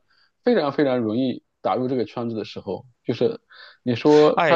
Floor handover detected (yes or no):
yes